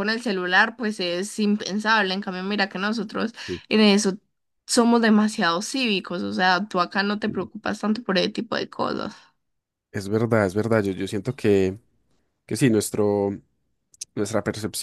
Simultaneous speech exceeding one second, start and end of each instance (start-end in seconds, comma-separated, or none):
none